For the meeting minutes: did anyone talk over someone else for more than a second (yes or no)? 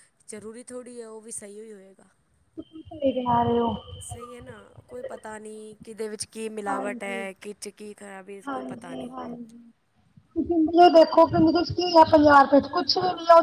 no